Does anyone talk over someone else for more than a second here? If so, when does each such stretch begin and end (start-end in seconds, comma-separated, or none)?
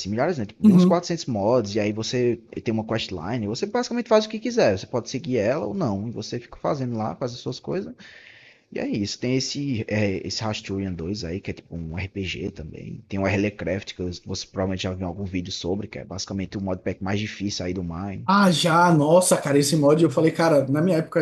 none